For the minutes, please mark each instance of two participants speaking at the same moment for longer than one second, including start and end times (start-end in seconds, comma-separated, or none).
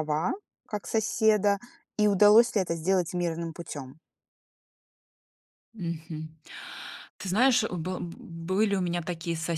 none